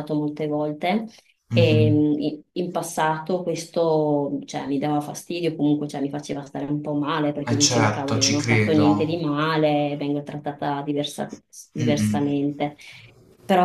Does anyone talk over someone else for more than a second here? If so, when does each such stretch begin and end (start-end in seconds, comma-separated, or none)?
7.5-8.8